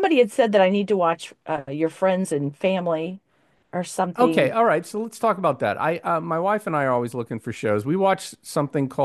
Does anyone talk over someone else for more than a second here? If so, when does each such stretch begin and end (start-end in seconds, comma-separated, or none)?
none